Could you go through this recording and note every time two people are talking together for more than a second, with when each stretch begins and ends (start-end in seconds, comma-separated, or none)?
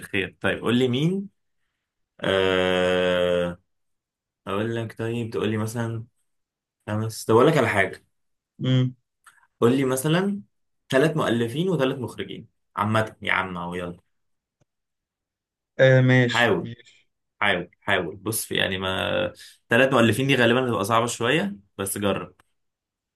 none